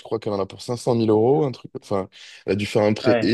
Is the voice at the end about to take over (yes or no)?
no